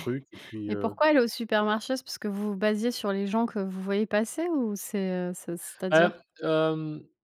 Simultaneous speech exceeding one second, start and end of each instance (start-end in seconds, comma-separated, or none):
none